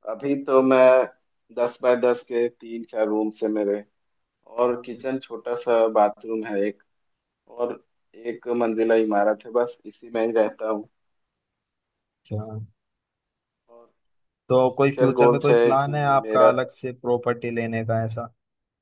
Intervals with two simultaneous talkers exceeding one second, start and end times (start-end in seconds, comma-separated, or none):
14.7-16.5